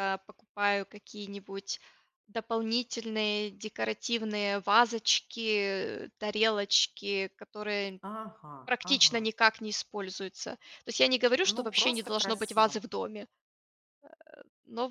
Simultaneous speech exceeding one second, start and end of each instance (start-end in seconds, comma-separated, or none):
11.4-12.8